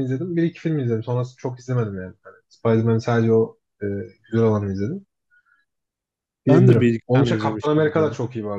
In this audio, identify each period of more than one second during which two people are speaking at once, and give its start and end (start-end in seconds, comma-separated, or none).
6.5-8.1